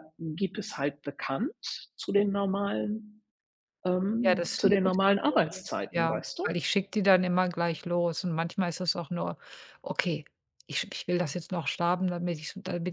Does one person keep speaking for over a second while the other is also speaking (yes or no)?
yes